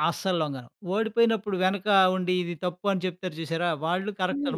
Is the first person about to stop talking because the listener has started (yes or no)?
no